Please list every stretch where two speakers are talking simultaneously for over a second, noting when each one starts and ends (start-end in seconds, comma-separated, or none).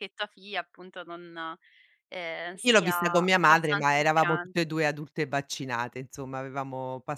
2.6-4.5